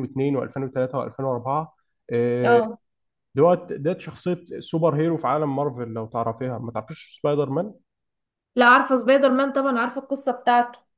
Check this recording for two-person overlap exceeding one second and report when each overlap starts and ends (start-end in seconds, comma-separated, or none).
none